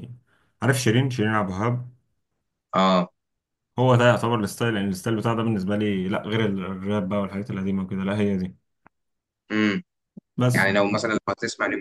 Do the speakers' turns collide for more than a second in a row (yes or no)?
no